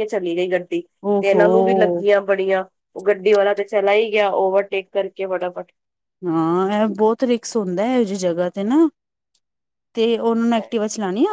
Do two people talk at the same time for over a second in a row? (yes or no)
no